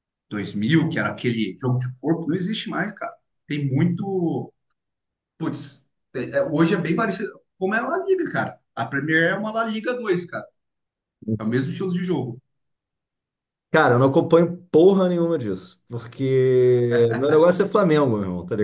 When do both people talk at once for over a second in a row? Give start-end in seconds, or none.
none